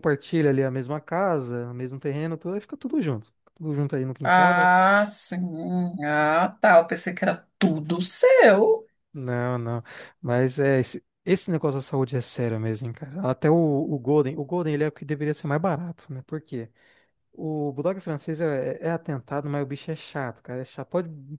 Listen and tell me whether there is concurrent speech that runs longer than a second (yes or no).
no